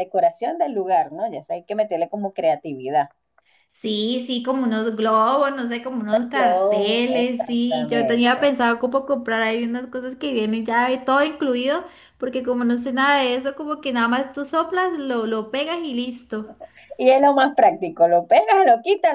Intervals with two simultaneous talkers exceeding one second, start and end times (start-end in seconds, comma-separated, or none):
6.3-8.5